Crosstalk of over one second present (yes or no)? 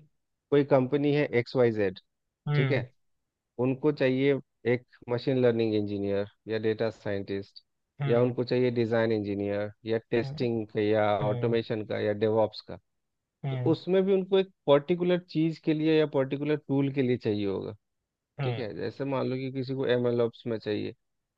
no